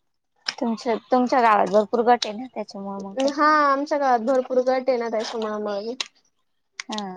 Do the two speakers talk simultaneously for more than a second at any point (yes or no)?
no